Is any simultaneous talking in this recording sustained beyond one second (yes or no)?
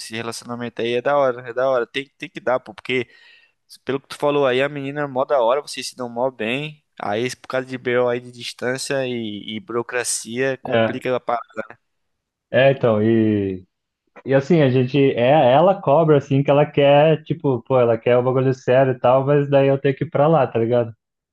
no